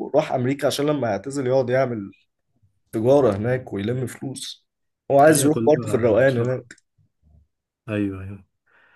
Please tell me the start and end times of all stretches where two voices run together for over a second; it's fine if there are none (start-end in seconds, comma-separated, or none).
5.3-6.6